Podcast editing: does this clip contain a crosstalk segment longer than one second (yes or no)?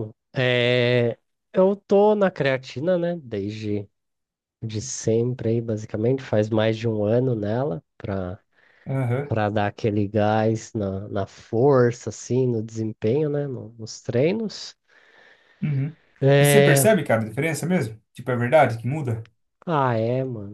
no